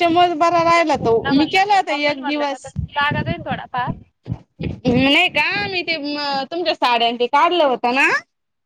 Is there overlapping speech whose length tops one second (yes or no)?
yes